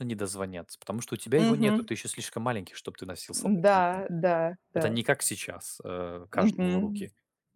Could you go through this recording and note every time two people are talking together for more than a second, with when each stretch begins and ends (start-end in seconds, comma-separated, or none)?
none